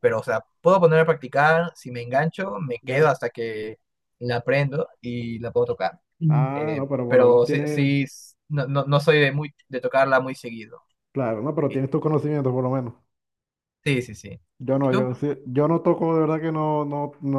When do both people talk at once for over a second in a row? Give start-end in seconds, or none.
6.3-7.9